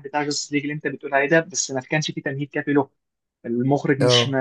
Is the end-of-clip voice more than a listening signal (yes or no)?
no